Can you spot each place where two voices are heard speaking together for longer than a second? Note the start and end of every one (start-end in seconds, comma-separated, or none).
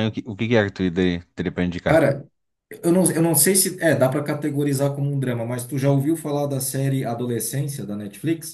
none